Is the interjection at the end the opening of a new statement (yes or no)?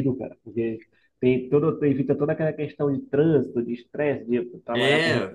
yes